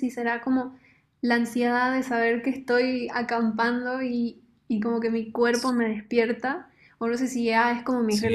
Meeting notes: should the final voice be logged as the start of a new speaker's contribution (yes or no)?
no